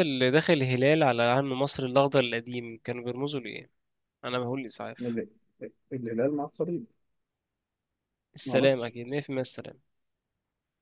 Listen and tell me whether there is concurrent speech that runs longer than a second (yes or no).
no